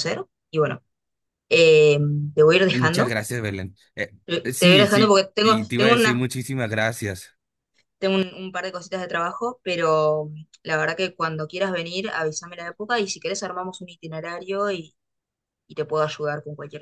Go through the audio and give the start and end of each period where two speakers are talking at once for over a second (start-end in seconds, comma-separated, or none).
4.5-6.2